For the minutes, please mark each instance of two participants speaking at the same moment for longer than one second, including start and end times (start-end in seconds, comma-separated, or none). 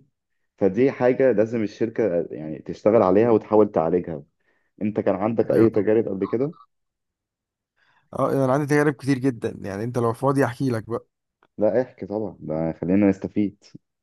none